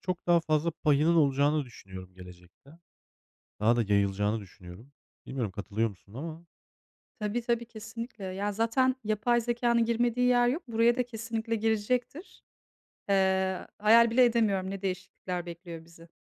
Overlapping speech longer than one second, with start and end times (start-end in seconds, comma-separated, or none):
none